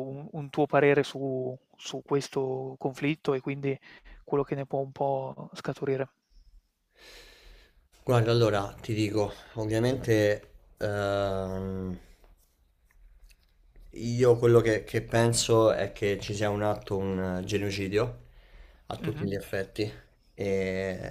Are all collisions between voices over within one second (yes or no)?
yes